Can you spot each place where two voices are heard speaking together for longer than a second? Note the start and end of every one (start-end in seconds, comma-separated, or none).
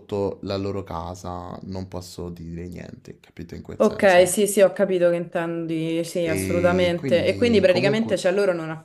6.3-8.1